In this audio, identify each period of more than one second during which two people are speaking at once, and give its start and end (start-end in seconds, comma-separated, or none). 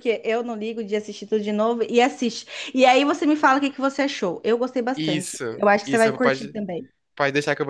5.0-6.6